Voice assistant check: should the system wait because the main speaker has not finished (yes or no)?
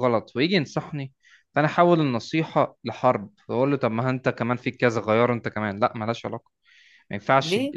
yes